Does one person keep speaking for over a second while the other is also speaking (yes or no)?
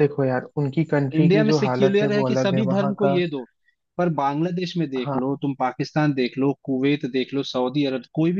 yes